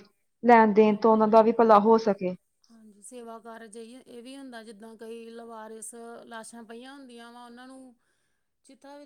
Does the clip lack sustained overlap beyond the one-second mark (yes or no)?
yes